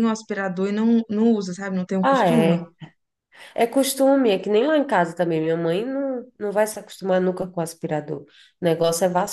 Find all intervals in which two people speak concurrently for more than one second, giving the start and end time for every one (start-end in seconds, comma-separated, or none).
none